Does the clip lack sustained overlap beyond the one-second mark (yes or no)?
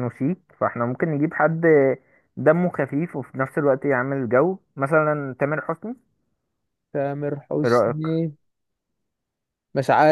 yes